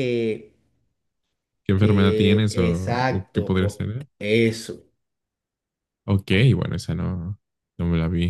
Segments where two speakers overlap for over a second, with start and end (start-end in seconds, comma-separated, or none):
1.8-4.0